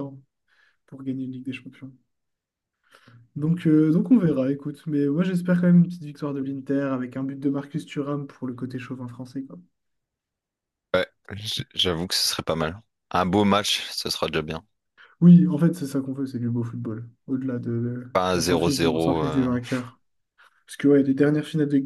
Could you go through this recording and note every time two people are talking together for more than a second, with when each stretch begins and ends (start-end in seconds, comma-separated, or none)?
18.1-19.9